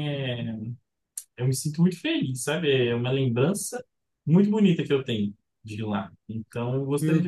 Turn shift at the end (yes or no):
no